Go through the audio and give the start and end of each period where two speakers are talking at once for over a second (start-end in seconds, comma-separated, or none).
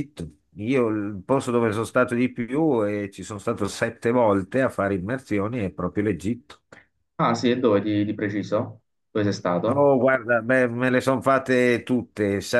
none